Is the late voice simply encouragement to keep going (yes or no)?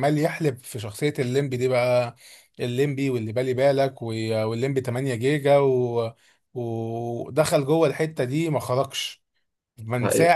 yes